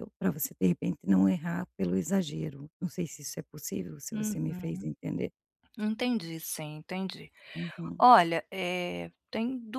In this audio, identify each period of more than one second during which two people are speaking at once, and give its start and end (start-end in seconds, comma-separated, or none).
none